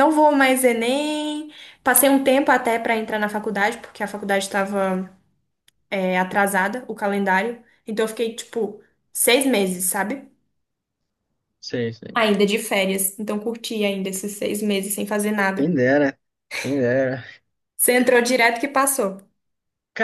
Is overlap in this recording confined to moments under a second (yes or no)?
yes